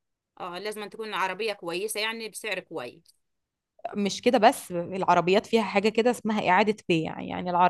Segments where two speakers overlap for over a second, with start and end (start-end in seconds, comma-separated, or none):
none